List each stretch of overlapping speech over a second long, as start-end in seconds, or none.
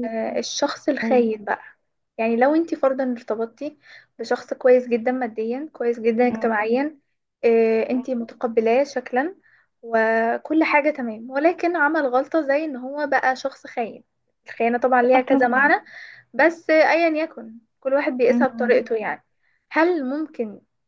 none